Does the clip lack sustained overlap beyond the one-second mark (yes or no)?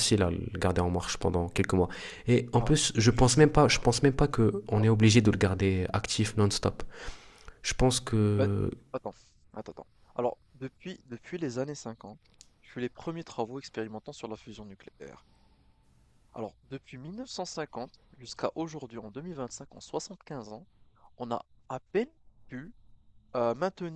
no